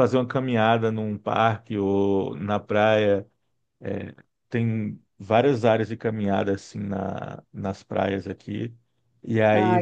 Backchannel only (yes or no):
yes